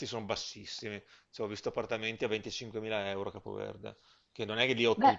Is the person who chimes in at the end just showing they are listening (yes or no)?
yes